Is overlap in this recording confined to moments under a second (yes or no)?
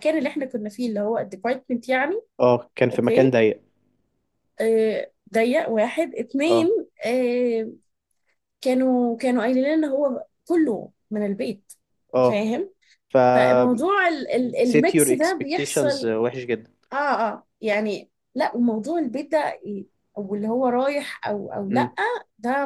no